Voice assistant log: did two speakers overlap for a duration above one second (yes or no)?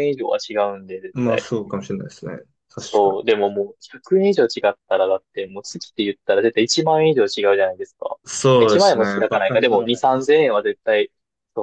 yes